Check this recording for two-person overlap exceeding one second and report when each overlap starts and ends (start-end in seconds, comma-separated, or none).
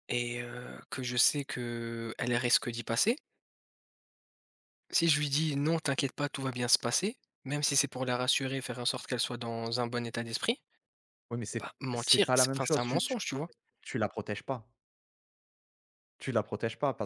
11.6-13.1